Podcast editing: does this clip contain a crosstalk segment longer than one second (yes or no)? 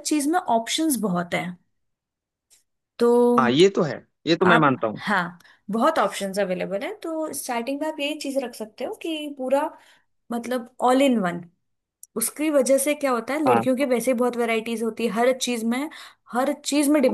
no